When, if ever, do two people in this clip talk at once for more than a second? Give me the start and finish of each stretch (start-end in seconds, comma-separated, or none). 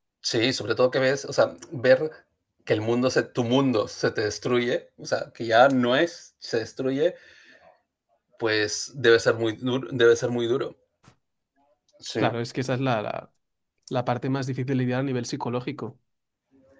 none